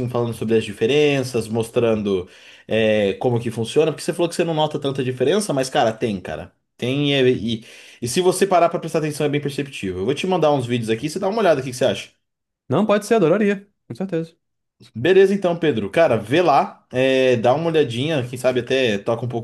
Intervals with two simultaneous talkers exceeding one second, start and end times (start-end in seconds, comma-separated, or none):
none